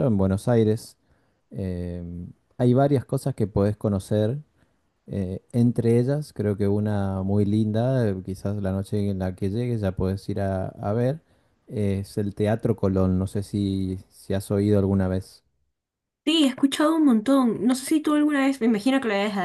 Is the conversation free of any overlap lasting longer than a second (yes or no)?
yes